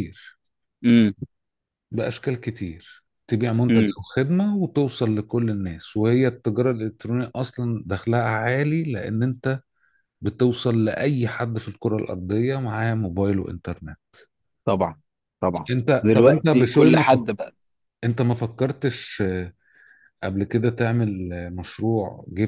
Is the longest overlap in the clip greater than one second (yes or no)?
yes